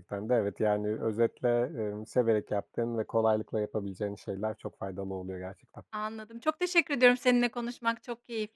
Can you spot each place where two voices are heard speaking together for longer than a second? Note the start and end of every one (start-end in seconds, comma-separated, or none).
none